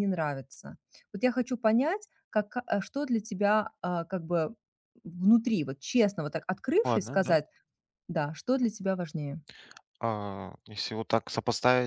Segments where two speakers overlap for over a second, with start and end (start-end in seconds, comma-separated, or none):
none